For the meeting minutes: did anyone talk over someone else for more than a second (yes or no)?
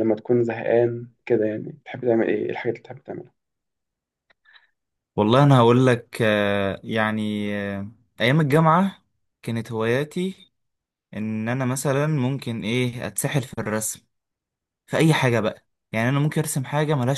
no